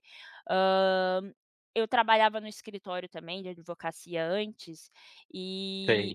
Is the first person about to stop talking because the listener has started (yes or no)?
no